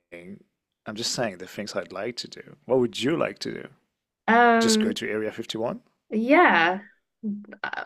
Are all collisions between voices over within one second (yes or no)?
yes